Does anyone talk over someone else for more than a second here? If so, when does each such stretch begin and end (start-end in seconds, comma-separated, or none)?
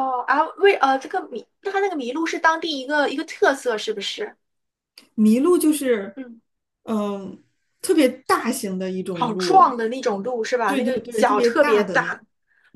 10.7-12.2